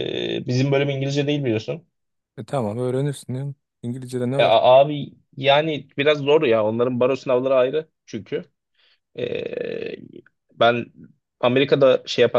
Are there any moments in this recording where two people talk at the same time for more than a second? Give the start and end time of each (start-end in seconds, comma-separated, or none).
none